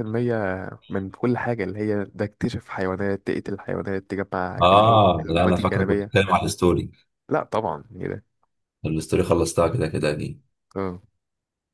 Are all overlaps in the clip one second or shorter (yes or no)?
no